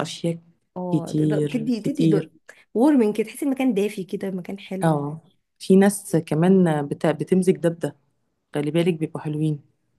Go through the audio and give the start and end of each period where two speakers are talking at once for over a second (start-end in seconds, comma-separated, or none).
0.9-2.3